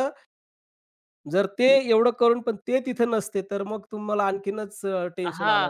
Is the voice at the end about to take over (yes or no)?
yes